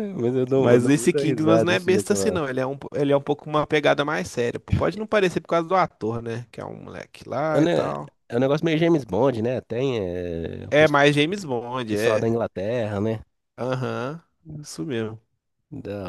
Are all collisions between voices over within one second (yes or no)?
no